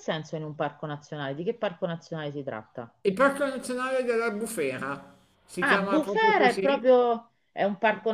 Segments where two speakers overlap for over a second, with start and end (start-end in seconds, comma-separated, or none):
5.6-6.9